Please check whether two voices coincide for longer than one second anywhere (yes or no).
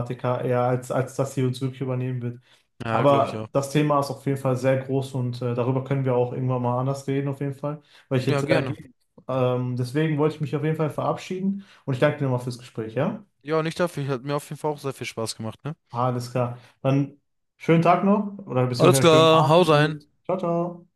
yes